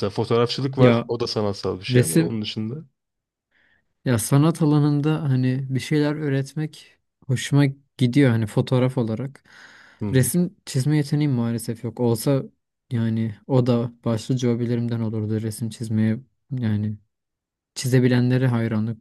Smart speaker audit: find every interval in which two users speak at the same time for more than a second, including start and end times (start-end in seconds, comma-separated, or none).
none